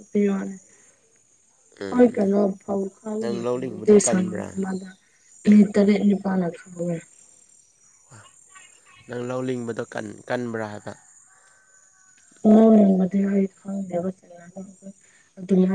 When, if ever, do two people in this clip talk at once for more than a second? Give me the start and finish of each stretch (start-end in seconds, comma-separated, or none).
3.2-4.5